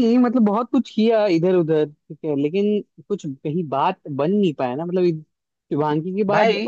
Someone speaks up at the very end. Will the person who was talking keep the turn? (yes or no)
yes